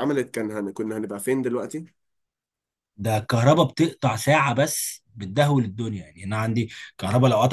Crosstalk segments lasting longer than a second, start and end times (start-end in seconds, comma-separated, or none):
none